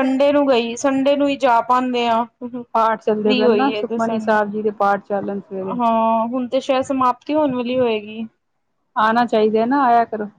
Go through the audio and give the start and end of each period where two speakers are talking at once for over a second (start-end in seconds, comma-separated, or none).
2.7-4.4